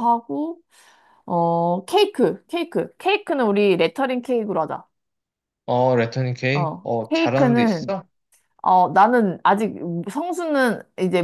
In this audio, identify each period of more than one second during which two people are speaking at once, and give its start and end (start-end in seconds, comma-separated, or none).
6.5-7.9